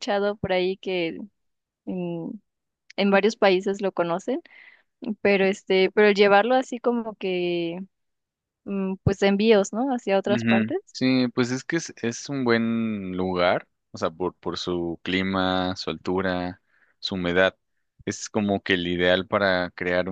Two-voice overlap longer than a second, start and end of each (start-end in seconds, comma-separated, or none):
none